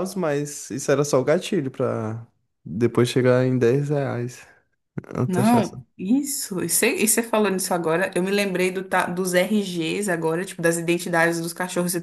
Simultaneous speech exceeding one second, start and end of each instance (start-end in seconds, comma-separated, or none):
none